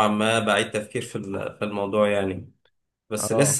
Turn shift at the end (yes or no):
no